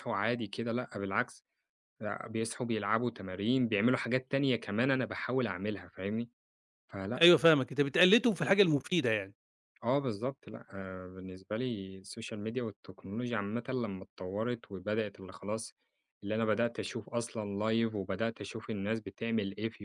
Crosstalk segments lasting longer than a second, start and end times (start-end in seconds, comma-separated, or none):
none